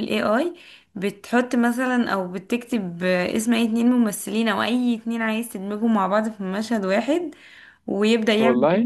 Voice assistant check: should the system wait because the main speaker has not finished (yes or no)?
yes